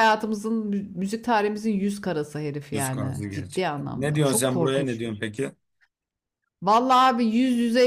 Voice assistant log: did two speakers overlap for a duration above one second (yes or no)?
yes